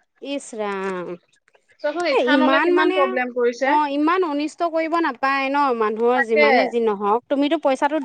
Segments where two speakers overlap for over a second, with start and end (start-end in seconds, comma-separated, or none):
2.3-3.7